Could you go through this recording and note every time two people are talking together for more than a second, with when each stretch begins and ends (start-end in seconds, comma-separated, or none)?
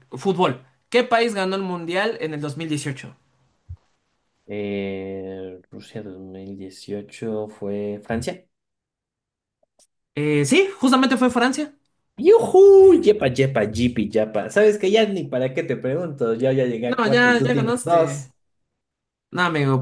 16.9-18.3